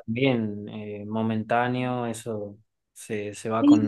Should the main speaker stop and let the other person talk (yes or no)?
yes